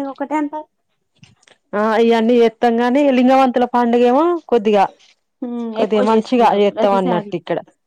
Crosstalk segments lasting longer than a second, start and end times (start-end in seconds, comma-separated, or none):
5.8-7.3